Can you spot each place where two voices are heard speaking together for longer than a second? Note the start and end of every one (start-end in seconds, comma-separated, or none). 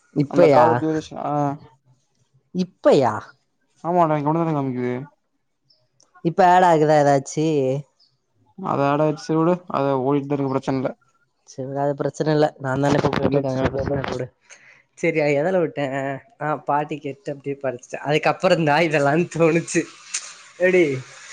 none